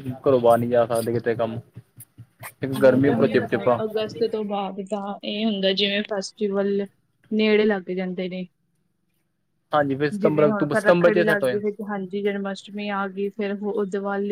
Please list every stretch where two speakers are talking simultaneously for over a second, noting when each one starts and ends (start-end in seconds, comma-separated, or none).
2.8-4.4, 10.2-11.6